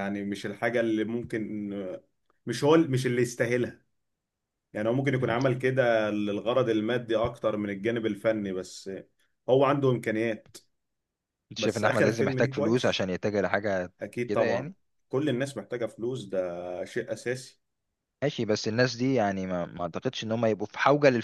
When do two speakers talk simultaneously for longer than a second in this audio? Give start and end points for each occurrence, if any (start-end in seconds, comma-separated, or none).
11.6-13.1